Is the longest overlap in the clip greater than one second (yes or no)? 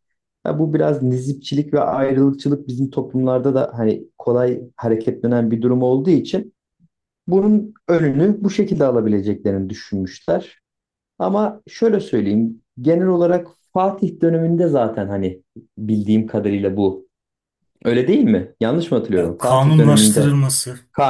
yes